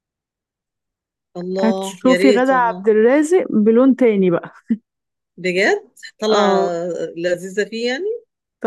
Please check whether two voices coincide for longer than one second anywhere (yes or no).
yes